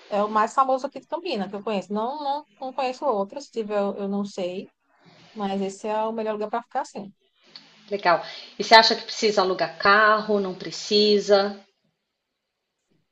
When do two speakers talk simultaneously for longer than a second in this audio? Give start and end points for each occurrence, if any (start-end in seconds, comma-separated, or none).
none